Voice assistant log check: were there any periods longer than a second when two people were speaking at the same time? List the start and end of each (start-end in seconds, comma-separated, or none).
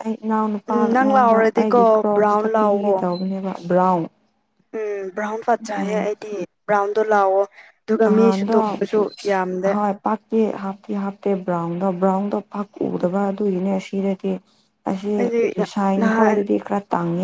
0.7-3.0